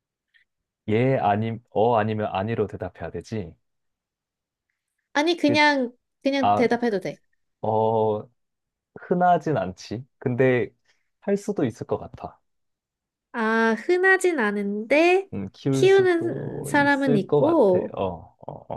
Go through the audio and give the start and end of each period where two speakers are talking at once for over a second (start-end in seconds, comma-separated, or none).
15.7-18.0